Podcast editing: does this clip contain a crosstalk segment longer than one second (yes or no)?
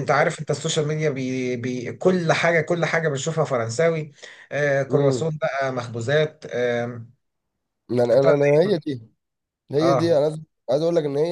no